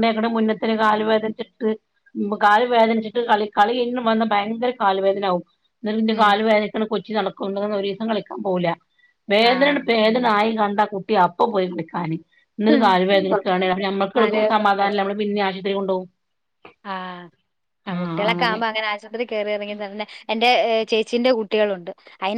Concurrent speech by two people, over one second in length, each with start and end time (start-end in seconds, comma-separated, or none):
none